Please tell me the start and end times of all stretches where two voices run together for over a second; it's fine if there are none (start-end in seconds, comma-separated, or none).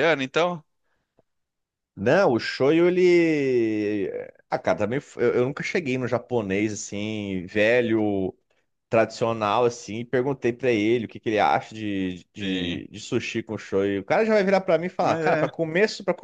none